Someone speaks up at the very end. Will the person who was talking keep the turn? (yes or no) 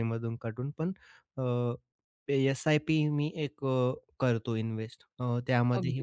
yes